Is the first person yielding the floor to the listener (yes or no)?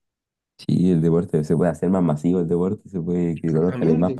yes